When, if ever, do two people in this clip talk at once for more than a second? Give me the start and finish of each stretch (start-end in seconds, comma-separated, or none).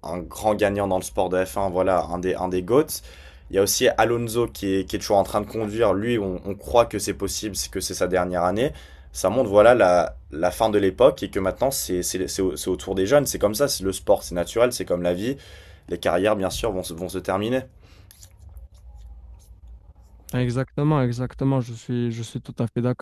none